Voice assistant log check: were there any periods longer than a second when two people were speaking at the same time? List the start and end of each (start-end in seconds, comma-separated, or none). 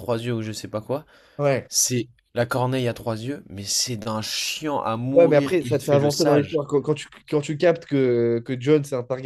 5.1-6.6